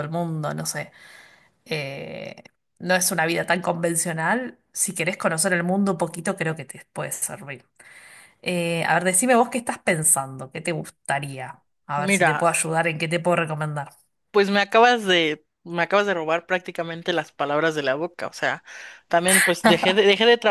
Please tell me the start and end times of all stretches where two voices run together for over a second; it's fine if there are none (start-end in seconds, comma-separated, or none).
none